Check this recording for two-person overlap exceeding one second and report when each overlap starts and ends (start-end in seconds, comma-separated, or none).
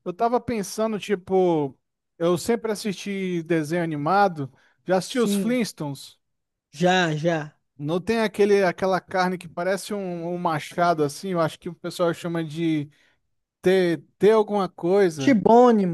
none